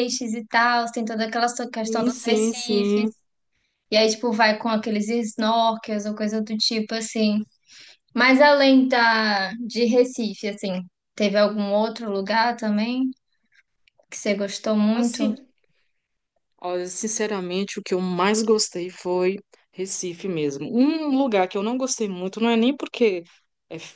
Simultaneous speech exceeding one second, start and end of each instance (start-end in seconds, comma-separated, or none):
1.8-3.1